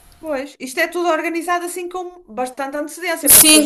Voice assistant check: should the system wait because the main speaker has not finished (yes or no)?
no